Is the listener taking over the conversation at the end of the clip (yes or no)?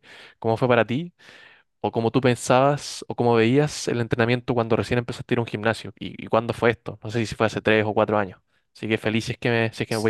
yes